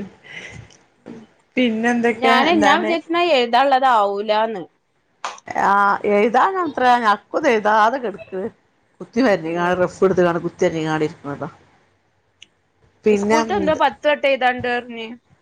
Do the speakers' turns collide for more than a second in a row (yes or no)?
no